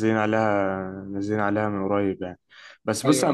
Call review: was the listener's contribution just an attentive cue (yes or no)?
yes